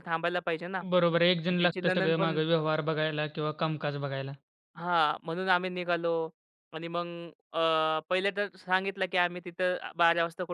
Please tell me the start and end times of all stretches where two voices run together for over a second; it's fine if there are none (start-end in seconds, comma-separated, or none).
0.9-2.4